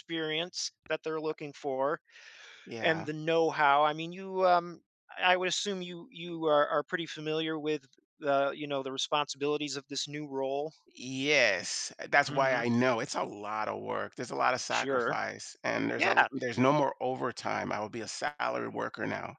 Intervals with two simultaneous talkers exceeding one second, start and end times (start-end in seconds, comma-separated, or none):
none